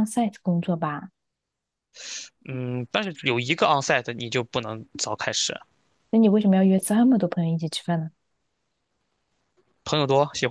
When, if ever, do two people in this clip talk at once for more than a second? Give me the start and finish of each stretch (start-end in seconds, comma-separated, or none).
none